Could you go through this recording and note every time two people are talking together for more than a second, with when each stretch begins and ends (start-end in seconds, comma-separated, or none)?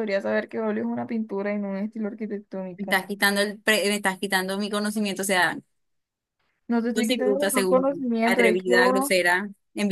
6.9-9.1